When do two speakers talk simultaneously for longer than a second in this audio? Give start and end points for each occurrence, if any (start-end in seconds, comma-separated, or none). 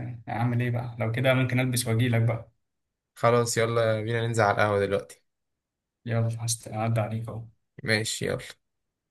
none